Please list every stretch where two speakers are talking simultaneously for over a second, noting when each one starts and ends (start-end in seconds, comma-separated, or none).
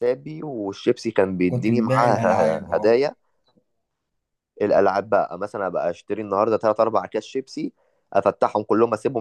1.5-3.0